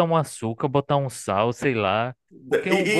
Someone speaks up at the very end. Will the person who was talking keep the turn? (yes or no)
no